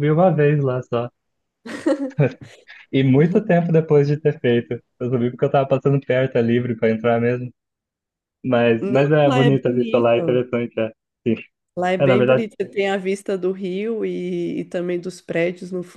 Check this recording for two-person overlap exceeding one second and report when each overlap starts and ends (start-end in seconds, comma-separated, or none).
8.8-10.4